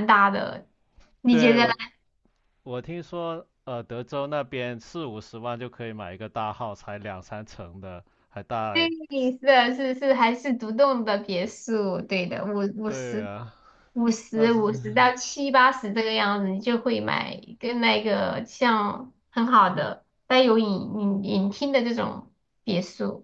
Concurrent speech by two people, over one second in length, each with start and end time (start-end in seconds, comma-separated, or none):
none